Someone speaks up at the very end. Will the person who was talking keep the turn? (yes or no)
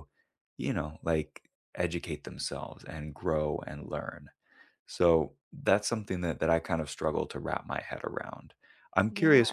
yes